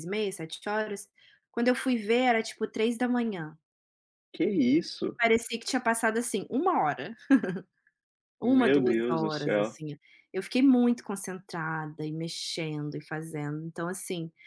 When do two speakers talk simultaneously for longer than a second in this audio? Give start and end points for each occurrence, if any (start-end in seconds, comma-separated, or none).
8.4-9.7